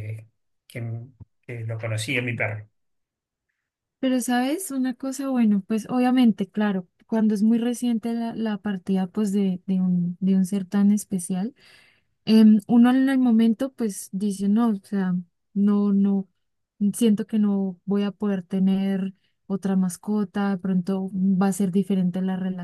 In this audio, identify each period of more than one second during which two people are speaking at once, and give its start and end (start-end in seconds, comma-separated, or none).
none